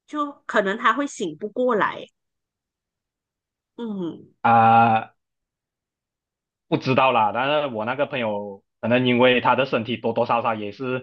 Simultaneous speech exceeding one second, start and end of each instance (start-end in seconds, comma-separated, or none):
none